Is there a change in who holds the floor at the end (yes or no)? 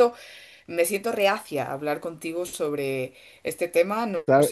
yes